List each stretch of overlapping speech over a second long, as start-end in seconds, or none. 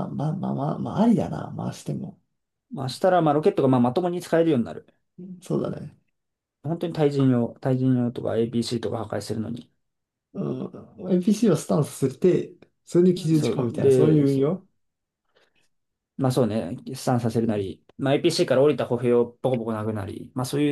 13.1-14.6